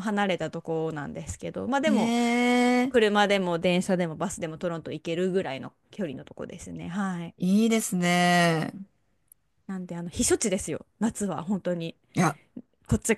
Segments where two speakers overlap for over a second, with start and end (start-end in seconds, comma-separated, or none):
none